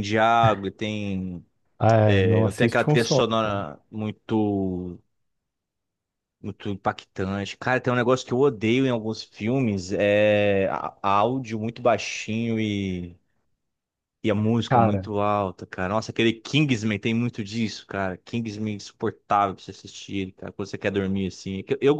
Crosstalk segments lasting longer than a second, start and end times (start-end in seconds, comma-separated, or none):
2.0-3.6